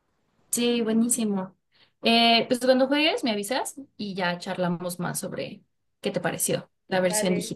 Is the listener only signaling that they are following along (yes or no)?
no